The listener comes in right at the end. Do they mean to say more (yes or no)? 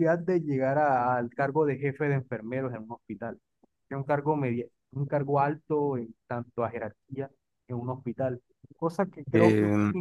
no